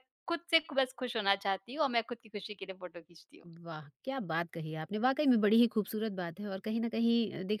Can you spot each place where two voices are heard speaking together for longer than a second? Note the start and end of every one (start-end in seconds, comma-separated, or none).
none